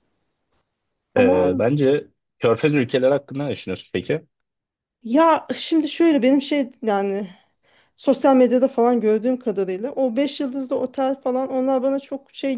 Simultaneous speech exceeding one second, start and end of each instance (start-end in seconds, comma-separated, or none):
none